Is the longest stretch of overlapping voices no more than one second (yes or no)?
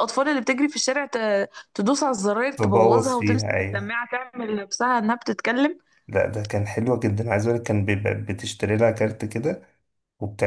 no